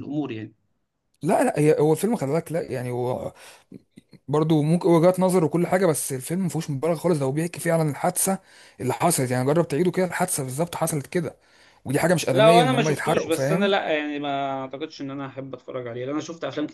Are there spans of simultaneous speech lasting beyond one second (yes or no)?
yes